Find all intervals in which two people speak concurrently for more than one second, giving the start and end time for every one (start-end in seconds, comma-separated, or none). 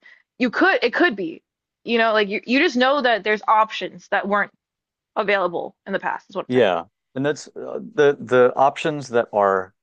none